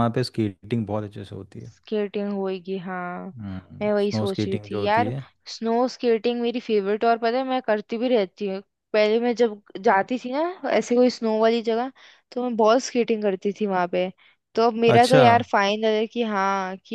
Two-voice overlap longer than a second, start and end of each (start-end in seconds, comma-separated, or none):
3.8-5.1